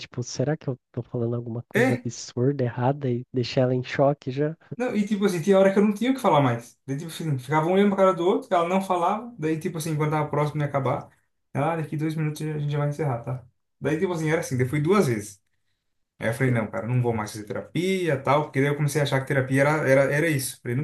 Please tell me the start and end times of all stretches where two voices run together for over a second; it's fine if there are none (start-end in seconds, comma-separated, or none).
none